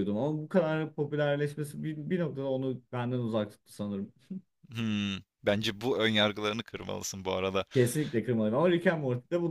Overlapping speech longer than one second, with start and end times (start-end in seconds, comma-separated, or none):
none